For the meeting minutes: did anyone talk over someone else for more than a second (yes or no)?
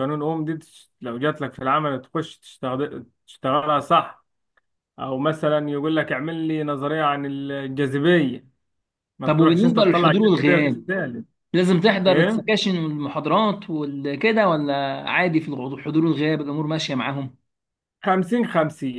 yes